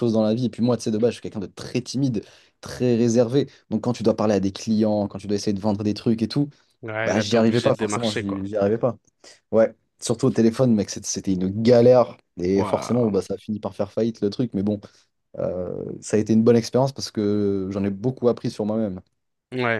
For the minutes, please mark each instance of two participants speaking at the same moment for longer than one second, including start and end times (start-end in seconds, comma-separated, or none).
7.0-8.4